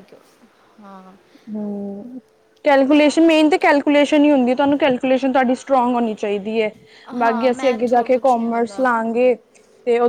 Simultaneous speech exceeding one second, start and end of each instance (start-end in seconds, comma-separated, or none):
7.2-9.3